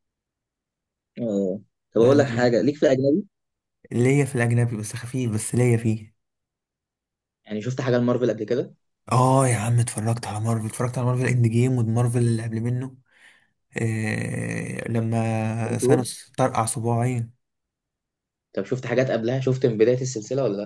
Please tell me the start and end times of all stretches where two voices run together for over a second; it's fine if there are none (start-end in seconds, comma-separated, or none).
none